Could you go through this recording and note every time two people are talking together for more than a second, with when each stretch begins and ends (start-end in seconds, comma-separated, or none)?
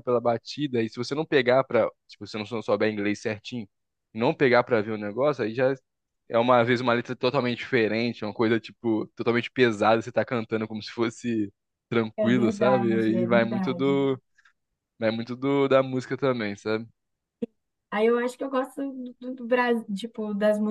12.2-14.0